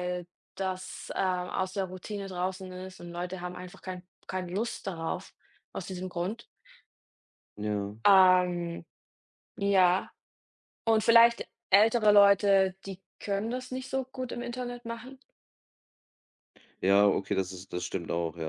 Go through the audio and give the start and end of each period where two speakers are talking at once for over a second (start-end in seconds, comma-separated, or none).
none